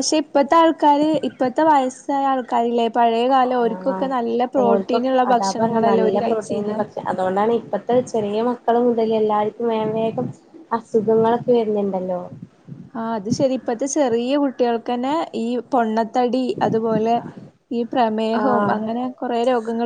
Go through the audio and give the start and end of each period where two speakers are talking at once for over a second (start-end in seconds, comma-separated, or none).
4.6-6.8